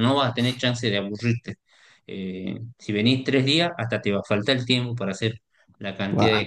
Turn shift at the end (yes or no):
no